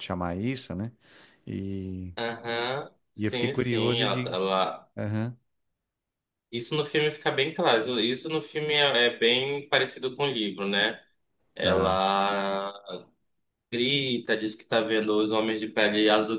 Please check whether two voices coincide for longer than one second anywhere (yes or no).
yes